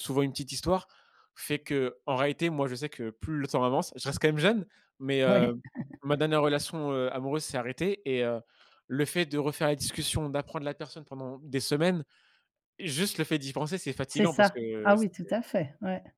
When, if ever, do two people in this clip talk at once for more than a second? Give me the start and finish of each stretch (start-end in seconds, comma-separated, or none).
14.1-15.4